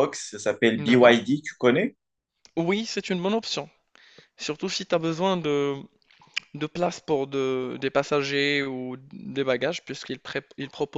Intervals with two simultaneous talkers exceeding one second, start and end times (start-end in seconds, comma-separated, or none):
none